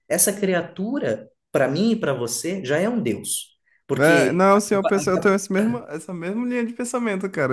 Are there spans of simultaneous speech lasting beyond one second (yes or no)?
yes